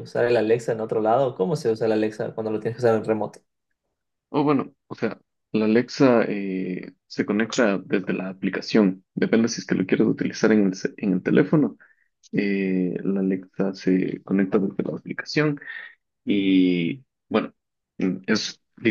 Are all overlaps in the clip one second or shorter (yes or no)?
yes